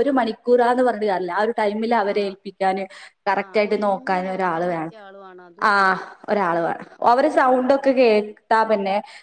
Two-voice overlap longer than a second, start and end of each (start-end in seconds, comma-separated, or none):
3.5-4.9